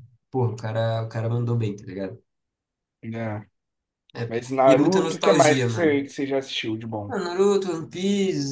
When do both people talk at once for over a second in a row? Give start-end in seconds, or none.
4.3-6.0